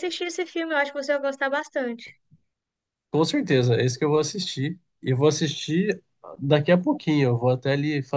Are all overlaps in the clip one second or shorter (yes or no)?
yes